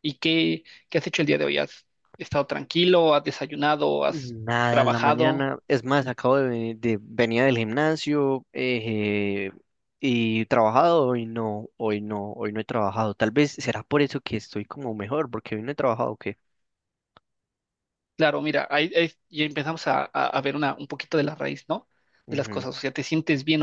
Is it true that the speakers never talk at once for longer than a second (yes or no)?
no